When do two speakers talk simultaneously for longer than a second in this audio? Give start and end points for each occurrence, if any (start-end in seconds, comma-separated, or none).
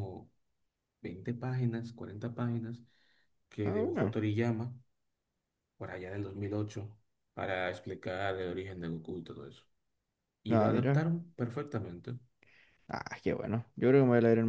none